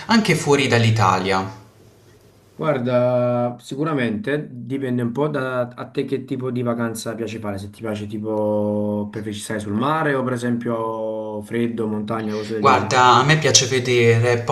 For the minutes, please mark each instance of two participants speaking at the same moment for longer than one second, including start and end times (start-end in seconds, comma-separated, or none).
none